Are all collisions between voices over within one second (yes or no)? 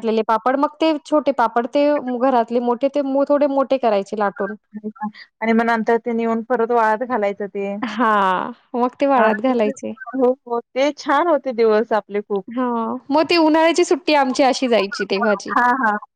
yes